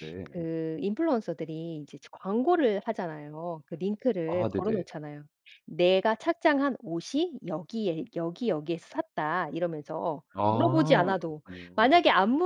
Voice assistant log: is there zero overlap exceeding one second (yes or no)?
no